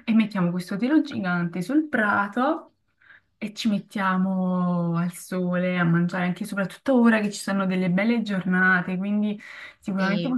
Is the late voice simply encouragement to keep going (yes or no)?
yes